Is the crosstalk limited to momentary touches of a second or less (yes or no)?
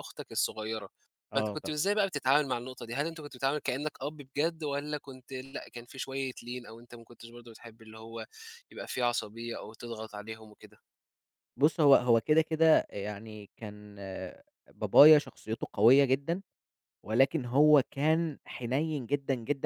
yes